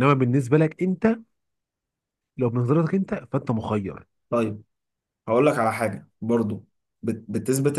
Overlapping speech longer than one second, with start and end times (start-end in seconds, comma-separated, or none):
none